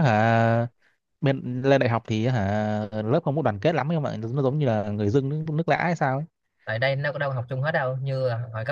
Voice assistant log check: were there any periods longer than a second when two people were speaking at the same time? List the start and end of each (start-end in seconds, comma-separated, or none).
none